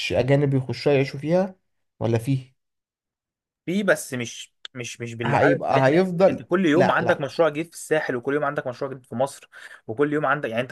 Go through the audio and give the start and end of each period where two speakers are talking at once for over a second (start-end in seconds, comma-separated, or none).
5.2-7.3